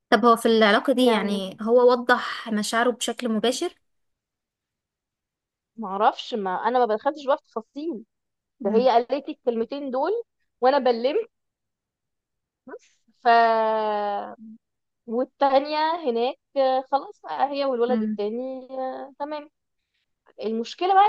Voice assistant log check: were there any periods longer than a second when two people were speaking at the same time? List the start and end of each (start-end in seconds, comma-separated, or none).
none